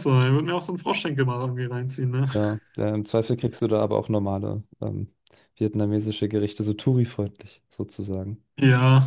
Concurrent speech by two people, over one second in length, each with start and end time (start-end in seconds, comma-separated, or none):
none